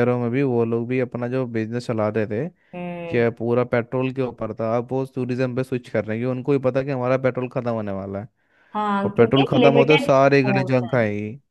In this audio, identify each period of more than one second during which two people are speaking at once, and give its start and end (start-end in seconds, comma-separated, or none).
9.0-11.0